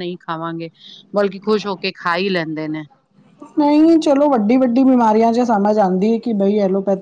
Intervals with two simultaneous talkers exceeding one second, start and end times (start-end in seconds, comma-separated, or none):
none